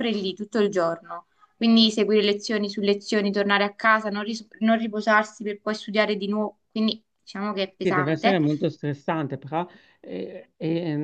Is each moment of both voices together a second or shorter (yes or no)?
yes